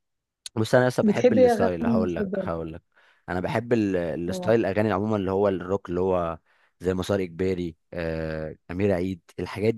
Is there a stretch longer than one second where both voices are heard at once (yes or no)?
yes